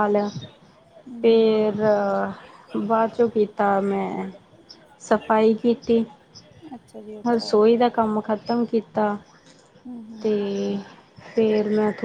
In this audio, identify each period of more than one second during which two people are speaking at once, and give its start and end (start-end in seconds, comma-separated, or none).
none